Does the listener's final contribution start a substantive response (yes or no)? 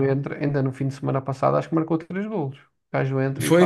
yes